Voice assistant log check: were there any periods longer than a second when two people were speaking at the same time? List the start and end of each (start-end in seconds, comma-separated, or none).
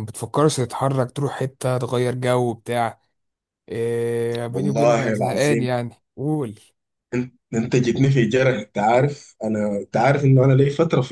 4.5-5.7